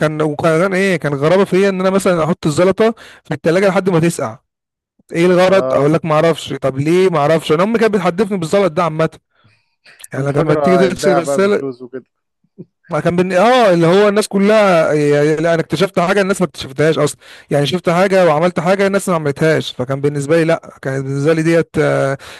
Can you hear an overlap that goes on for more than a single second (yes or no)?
yes